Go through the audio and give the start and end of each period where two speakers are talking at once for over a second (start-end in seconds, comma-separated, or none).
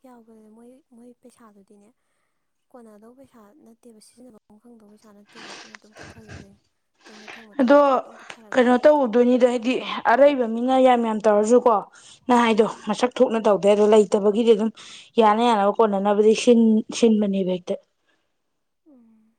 none